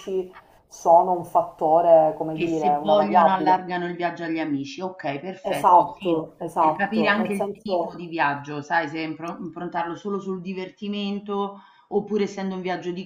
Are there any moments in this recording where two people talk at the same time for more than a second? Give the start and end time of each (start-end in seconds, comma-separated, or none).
2.3-3.6, 5.4-8.0